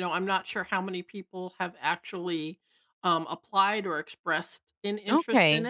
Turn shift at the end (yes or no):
yes